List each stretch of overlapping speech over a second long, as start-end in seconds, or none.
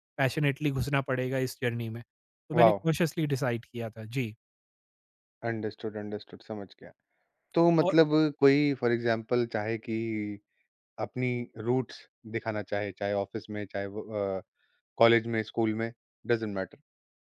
none